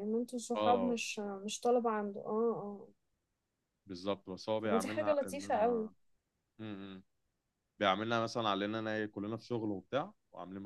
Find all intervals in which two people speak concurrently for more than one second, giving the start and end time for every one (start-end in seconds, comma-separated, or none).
4.6-5.9